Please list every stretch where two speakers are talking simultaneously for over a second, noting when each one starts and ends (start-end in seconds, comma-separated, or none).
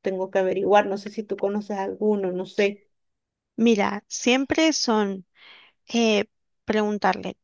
none